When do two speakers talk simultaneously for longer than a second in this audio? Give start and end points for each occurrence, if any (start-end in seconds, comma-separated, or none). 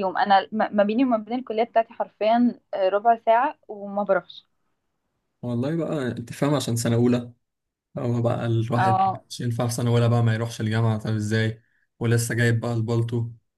none